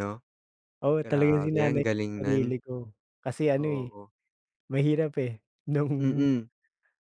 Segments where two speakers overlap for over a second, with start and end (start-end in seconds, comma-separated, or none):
1.0-2.6